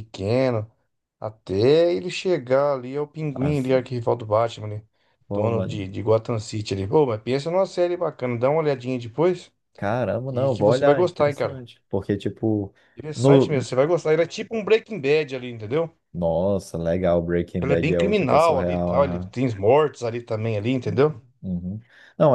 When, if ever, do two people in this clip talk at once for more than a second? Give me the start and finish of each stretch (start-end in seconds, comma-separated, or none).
10.3-11.6, 17.6-19.4